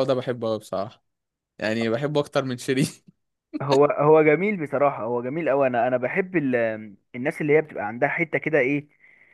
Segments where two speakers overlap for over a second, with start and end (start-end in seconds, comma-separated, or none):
none